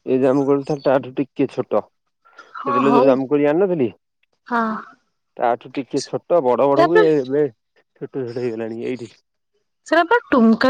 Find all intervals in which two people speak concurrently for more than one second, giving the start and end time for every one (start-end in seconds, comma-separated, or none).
none